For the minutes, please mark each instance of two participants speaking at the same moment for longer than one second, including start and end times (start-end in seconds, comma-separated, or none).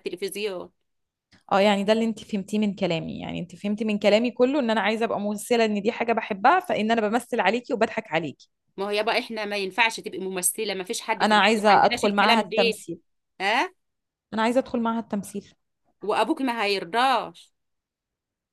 11.2-12.8